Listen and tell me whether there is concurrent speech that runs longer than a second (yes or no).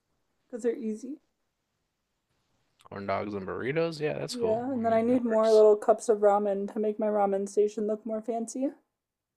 yes